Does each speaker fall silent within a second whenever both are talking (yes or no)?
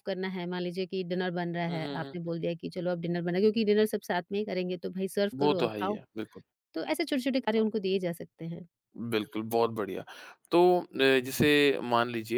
yes